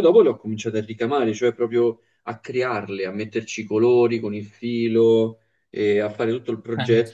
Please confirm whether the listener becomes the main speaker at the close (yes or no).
no